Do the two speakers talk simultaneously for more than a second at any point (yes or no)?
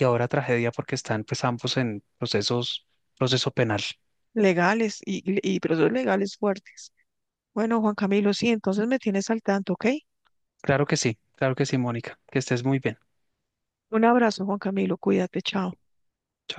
no